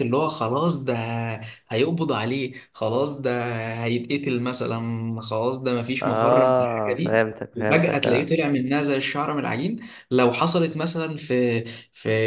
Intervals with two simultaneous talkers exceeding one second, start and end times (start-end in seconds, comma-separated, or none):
6.0-8.3